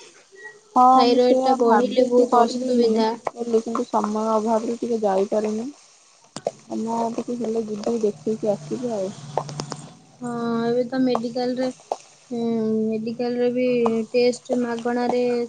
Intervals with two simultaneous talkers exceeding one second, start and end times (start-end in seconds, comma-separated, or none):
0.9-2.7